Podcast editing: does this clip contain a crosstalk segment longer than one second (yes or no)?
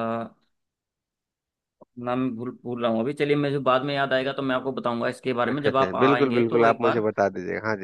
yes